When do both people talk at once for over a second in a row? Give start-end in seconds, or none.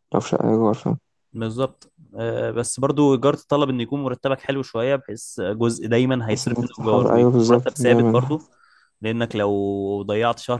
6.3-8.3